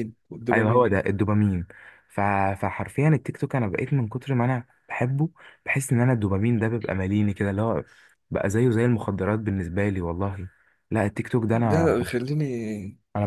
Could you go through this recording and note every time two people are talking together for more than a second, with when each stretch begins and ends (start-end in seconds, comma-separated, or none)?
none